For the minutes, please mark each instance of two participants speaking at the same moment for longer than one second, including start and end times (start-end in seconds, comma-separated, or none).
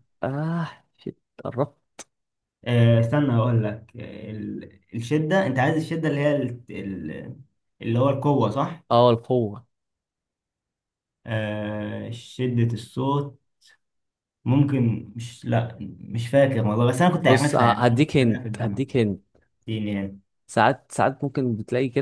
17.3-18.8